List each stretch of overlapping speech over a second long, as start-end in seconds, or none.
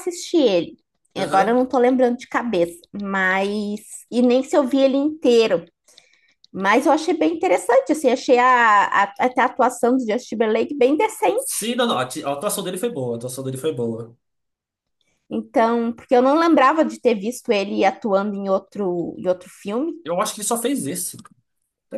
none